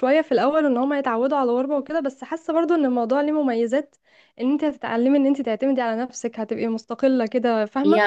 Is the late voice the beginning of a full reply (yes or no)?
yes